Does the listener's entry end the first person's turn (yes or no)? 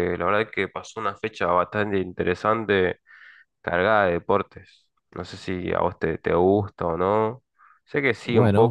yes